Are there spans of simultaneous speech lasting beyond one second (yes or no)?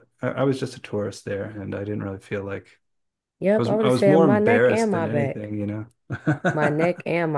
yes